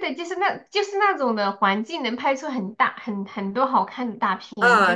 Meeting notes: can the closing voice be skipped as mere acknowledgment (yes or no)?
no